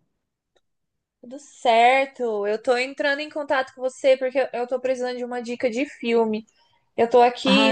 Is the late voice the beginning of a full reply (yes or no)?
no